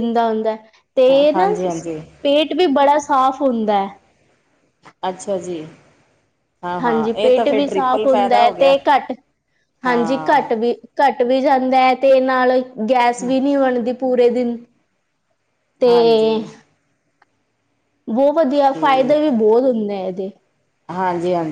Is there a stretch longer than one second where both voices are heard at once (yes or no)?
yes